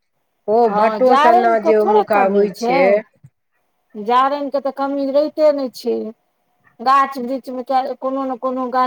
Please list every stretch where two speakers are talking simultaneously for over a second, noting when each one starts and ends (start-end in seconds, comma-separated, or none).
0.7-2.5